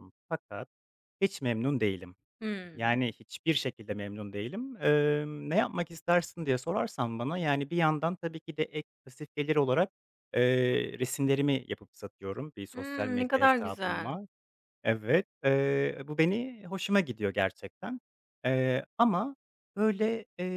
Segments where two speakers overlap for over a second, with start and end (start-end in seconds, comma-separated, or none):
12.7-14.2